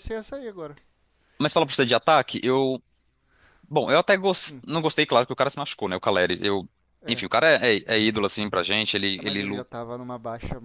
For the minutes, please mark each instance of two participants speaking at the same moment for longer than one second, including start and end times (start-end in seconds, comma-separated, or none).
none